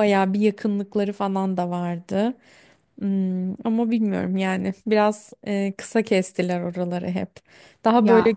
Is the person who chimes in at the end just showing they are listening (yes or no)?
yes